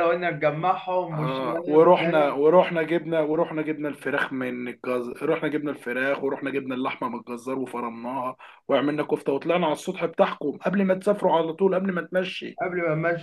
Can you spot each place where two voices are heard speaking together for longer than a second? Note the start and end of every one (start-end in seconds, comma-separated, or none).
1.1-2.3